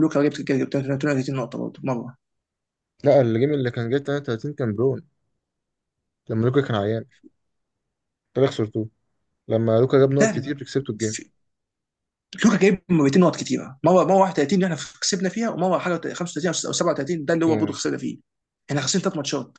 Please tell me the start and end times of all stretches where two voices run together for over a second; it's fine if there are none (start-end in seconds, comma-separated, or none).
none